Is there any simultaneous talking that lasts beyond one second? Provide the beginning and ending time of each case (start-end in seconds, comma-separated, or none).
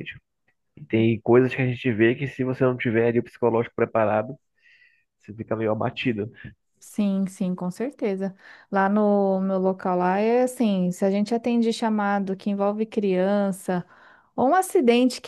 none